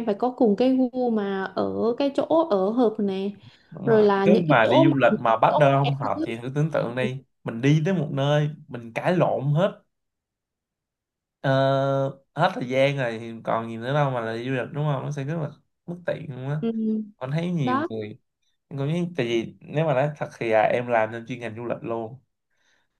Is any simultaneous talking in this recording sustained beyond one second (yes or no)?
yes